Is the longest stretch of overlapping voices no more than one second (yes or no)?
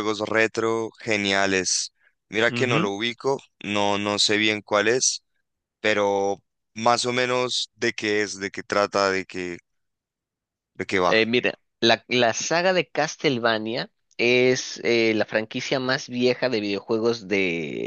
yes